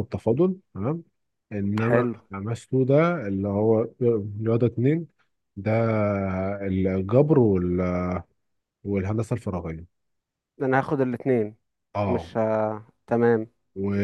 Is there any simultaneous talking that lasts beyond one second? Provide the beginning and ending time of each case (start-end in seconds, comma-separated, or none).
none